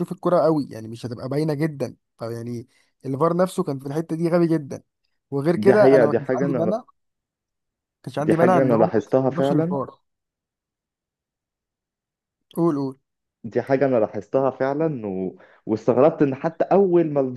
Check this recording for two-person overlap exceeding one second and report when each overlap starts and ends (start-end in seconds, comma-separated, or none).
5.5-6.8, 8.2-9.8